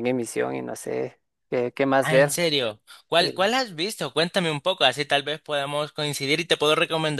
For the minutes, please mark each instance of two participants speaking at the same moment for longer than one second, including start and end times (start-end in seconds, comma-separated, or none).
none